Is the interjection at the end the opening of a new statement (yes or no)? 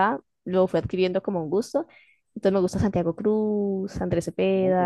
yes